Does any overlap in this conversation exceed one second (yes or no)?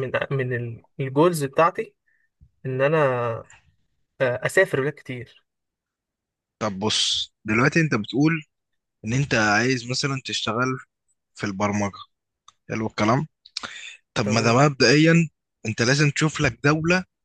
no